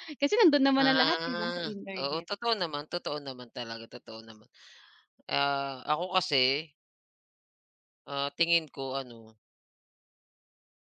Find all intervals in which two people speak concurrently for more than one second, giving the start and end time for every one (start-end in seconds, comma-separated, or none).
0.8-2.3